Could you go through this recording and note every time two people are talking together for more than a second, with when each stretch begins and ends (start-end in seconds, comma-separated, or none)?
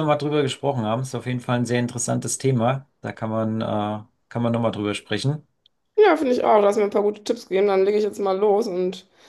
none